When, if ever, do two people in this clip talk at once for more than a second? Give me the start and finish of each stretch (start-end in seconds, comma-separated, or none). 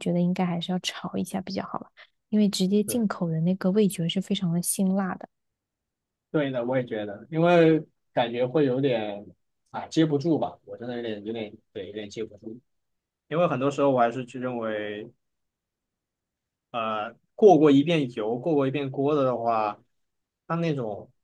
none